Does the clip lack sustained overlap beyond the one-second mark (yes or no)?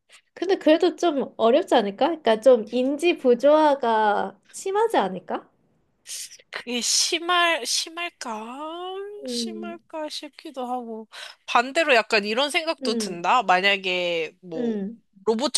yes